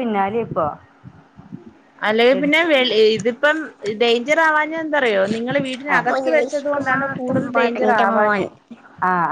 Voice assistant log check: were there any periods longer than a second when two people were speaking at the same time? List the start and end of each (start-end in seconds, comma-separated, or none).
6.0-8.4